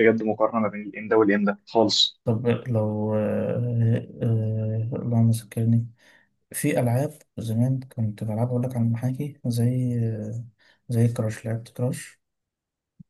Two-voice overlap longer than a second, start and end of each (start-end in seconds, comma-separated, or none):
none